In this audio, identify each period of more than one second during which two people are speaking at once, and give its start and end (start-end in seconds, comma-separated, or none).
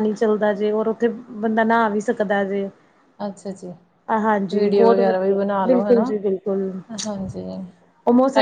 4.5-6.1